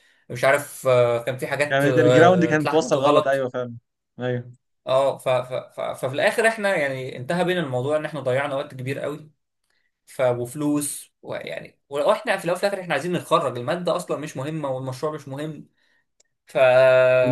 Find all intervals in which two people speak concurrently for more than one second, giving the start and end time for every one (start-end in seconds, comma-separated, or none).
1.7-3.5